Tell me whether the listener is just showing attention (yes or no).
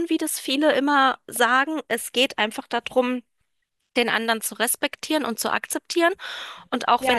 no